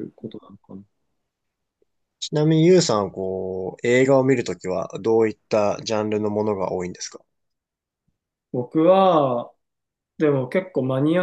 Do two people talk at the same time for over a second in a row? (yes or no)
no